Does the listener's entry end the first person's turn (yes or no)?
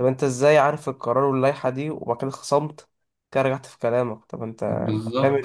yes